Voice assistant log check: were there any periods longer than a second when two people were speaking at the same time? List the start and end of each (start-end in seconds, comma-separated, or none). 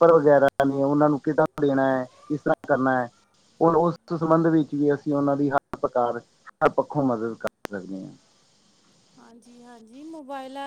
none